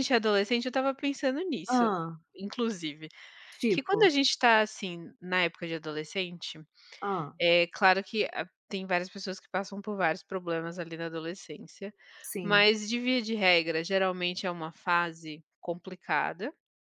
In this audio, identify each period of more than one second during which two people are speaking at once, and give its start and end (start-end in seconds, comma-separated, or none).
none